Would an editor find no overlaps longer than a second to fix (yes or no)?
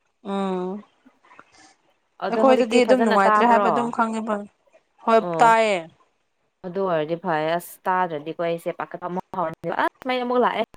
no